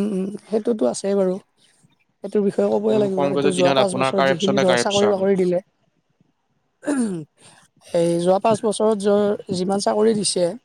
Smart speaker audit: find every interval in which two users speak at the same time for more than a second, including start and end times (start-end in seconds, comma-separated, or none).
2.9-5.2